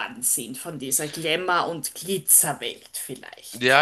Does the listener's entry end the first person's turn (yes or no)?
yes